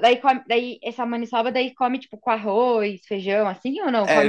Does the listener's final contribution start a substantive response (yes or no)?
yes